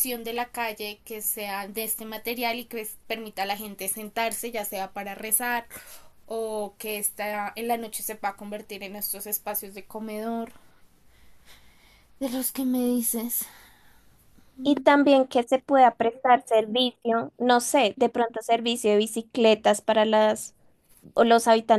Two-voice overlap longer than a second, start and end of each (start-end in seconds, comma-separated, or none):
none